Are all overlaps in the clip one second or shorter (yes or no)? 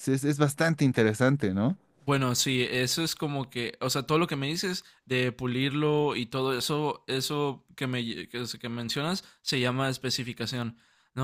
yes